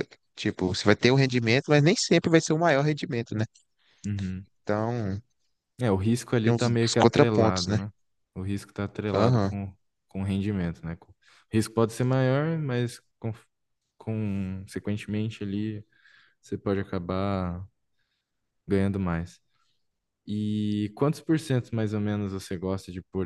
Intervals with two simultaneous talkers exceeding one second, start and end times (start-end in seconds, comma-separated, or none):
6.4-7.8